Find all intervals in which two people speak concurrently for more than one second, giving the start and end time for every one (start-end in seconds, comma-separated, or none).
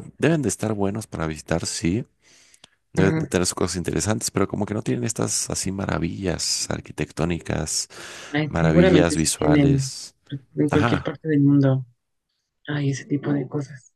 8.5-9.9